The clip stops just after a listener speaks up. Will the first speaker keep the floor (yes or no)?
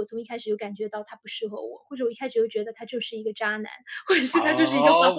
no